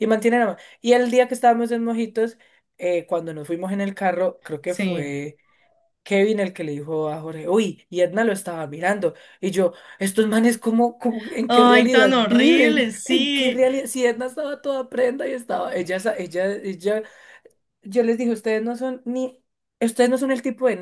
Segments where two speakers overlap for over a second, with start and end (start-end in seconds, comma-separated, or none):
11.5-13.6